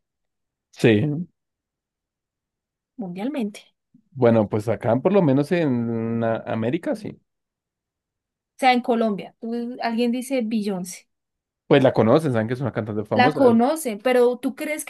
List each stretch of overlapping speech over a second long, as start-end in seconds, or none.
none